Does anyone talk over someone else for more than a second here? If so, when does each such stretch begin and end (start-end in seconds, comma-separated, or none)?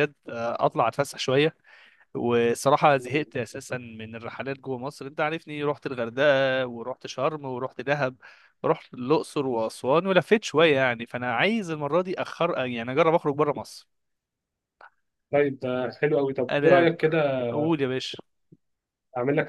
none